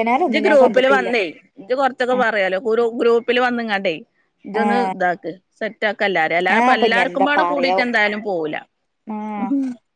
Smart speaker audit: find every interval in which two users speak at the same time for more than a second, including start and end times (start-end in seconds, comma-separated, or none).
none